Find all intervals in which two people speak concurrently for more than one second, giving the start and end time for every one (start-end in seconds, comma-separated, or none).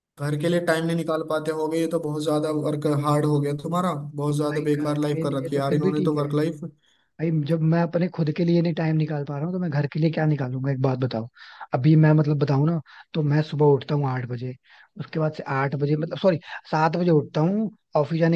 4.5-6.3